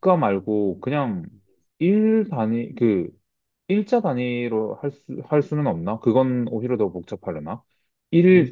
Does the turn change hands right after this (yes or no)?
no